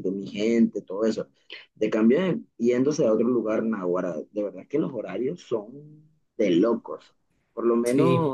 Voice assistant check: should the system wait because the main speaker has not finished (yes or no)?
yes